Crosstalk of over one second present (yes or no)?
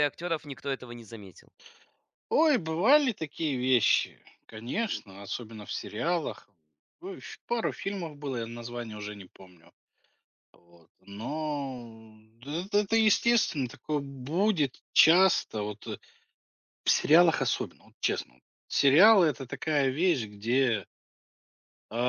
no